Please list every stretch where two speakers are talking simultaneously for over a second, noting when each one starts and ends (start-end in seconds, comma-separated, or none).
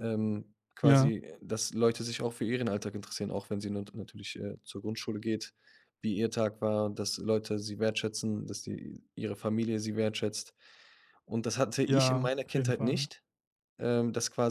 11.9-13.1